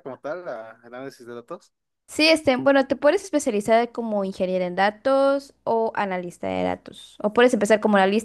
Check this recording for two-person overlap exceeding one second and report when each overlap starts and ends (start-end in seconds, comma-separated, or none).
none